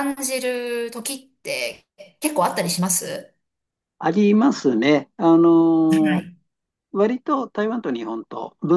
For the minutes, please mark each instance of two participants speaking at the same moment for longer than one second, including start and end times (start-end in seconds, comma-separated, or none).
none